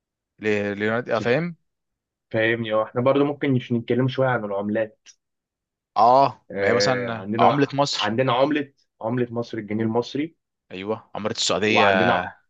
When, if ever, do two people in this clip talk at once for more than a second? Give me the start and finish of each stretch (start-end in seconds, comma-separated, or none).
6.5-8.2